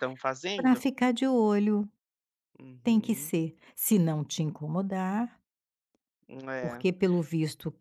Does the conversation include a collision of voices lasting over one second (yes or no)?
no